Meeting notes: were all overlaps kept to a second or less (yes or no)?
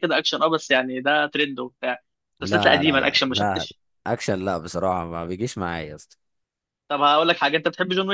no